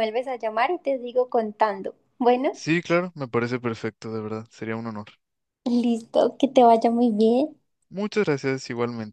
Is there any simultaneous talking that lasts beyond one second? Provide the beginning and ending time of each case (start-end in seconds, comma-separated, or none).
none